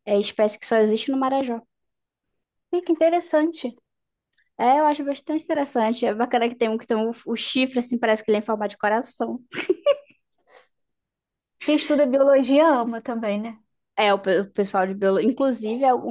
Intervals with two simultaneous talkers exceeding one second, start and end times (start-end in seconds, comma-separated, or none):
none